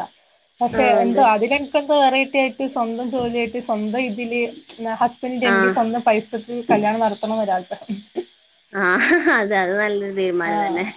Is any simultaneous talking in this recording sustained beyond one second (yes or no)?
no